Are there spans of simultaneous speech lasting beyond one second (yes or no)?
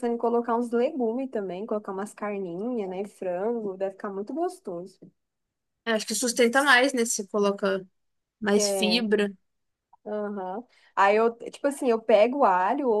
no